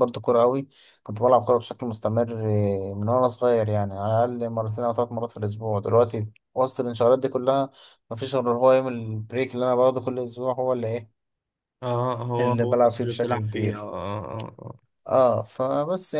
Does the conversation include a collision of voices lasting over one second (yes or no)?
yes